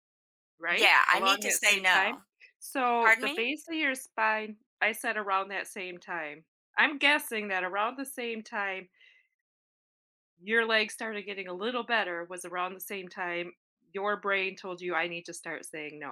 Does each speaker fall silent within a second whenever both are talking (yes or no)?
no